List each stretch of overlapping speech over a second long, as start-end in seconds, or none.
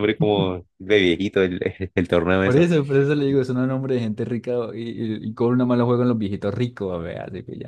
none